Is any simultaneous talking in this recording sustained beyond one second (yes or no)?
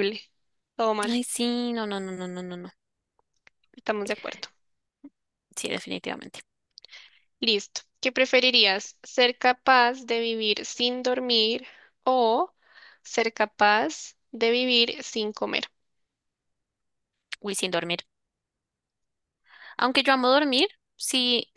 no